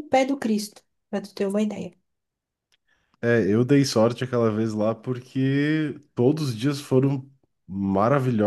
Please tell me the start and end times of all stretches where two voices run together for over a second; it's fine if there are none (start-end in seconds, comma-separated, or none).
none